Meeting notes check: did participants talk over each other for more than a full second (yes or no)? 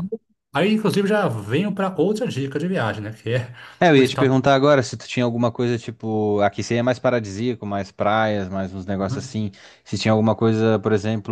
no